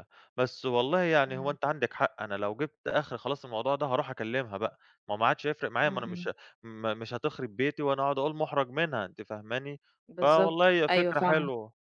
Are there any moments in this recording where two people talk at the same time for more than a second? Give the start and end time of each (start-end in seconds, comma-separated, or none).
10.2-11.5